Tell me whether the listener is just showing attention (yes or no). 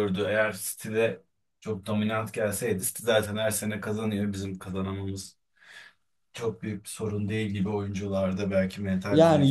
no